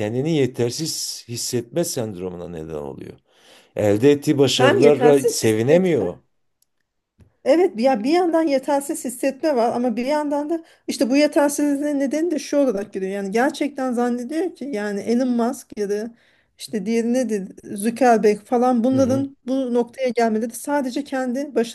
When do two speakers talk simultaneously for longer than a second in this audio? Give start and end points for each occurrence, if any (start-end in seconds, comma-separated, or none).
4.5-5.9